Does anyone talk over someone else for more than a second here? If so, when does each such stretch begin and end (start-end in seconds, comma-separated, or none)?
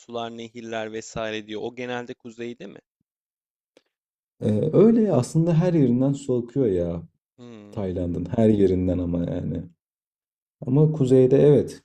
none